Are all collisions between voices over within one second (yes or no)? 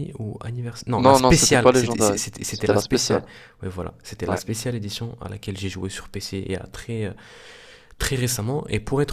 no